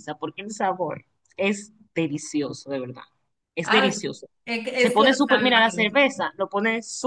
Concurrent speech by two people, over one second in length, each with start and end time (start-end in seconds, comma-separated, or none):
4.7-6.0